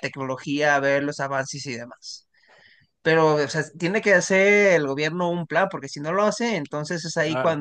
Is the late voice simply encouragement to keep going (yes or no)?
yes